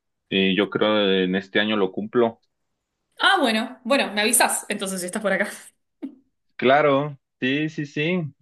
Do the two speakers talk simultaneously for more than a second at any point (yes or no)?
no